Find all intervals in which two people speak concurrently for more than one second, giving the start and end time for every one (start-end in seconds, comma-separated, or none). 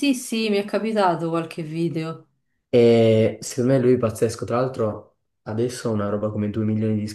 none